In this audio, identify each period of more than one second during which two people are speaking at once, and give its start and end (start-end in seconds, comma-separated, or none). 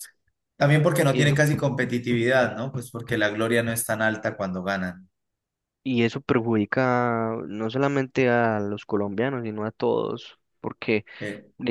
none